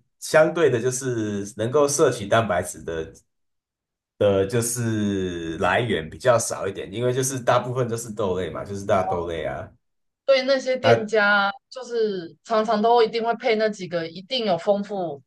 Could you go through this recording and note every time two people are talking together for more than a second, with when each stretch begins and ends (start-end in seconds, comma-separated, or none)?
none